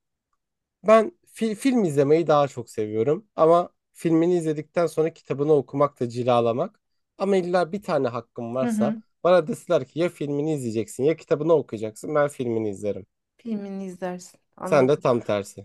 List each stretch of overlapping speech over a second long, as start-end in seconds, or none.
none